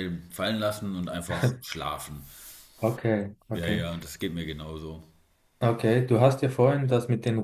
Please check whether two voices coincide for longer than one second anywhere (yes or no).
no